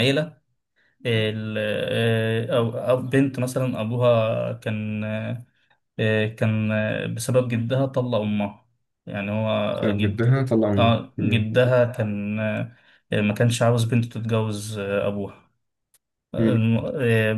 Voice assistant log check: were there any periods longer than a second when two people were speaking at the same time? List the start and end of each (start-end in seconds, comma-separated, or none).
9.7-11.5